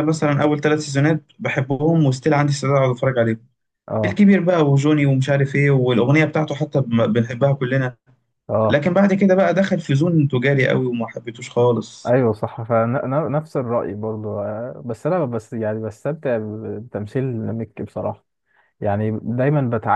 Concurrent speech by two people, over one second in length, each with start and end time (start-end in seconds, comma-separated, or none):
none